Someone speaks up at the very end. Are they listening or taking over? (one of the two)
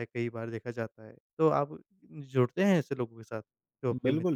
taking over